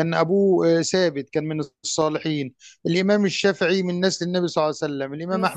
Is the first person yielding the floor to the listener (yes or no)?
no